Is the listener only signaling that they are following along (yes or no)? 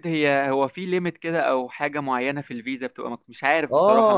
no